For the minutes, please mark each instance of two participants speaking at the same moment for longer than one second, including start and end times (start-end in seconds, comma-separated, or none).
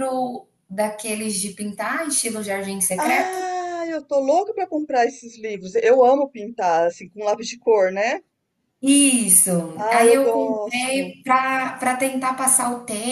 9.8-11.2